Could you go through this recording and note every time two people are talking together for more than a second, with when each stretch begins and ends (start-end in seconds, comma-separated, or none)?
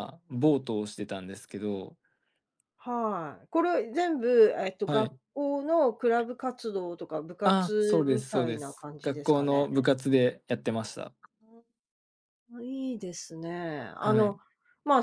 7.4-9.7